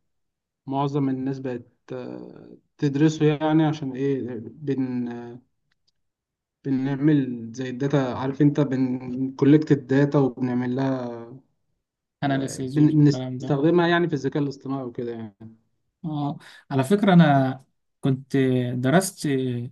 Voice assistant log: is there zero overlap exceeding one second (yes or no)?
no